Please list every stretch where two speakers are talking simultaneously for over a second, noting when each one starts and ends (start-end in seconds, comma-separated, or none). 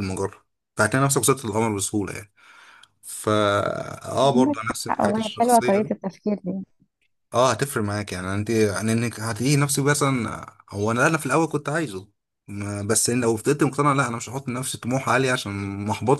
4.2-5.9